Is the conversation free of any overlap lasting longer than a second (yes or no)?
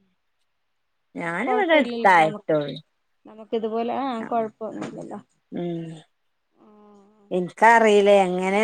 no